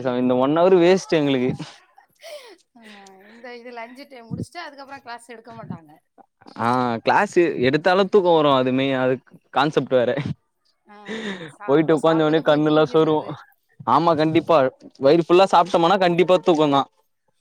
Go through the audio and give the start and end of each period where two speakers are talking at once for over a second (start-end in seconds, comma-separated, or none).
12.1-13.3